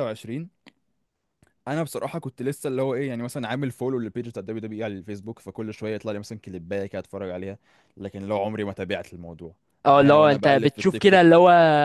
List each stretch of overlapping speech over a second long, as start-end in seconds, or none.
9.8-11.2